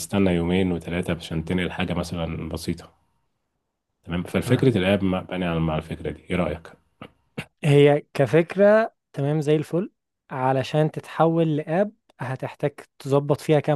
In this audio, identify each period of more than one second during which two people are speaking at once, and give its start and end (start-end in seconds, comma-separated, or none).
none